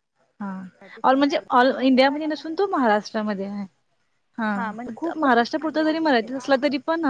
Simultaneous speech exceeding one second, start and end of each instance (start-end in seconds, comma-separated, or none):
4.6-6.3